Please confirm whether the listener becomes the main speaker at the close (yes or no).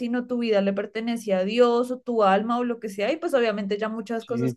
yes